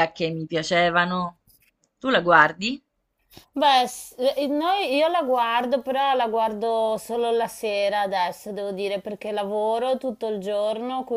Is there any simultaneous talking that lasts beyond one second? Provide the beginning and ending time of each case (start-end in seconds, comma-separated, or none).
none